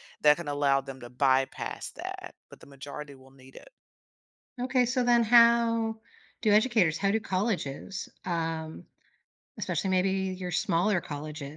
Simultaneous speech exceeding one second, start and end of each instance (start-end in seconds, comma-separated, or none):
none